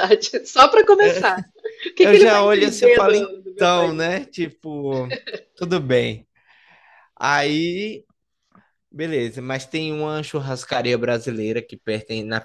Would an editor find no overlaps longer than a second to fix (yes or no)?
no